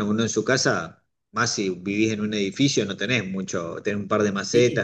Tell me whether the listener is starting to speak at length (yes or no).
no